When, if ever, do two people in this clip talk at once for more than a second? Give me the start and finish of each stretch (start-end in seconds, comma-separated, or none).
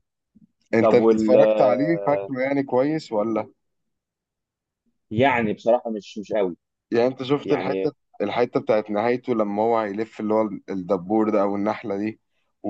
0.8-2.3